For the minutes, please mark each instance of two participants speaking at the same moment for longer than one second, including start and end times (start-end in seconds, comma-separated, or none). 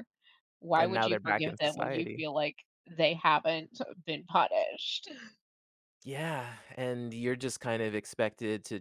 0.8-2.2